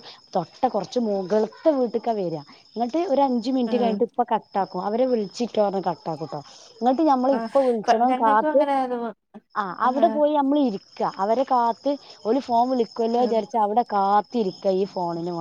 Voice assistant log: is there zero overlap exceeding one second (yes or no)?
no